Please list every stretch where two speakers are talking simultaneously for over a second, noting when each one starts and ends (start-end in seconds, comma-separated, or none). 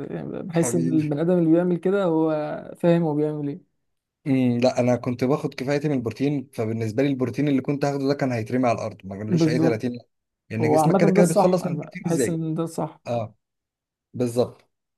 10.6-12.4